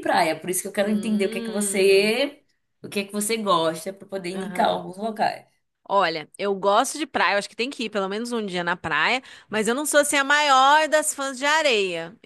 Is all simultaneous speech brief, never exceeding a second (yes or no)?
no